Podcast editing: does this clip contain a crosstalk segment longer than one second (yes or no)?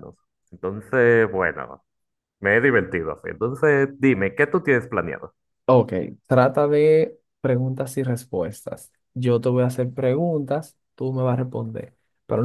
no